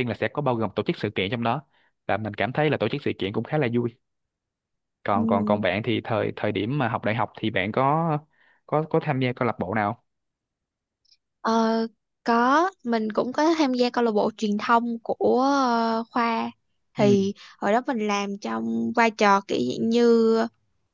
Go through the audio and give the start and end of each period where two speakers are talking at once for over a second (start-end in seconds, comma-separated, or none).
none